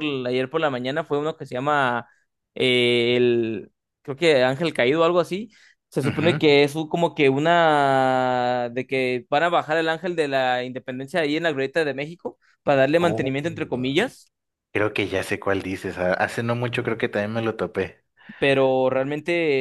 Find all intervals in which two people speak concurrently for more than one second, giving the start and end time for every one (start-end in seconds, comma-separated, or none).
none